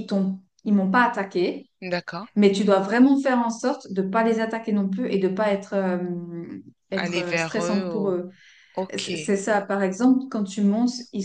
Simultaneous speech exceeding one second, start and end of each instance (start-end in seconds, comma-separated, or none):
6.9-8.2